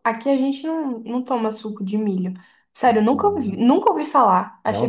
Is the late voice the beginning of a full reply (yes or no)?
yes